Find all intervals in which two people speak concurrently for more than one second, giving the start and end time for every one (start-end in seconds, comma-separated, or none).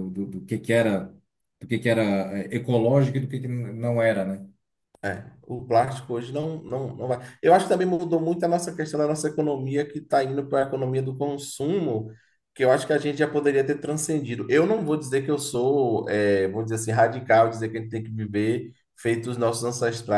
none